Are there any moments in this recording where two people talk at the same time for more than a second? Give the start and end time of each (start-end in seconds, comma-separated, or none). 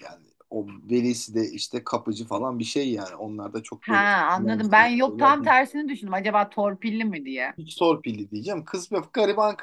3.8-5.5